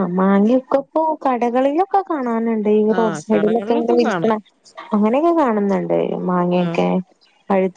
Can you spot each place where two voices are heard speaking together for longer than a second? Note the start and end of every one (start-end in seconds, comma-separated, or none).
3.0-4.4